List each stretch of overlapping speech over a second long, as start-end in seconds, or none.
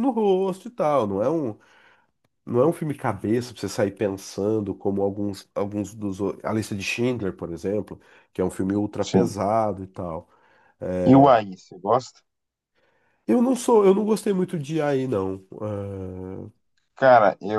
none